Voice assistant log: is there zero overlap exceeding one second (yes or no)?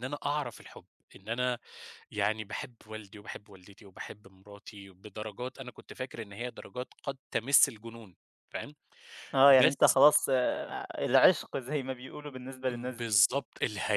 yes